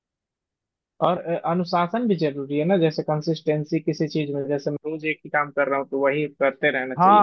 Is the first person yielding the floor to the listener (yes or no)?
yes